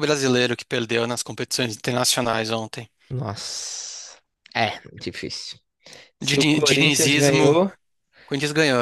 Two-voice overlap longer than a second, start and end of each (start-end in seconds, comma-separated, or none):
6.2-7.6